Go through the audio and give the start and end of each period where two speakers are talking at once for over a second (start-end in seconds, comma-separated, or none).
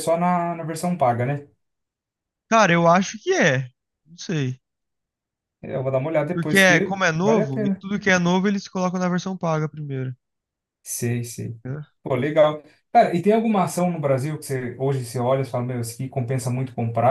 6.3-7.8